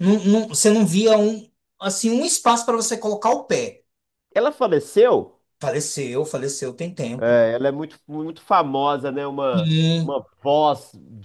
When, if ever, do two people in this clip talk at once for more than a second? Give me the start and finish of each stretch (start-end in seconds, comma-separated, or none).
none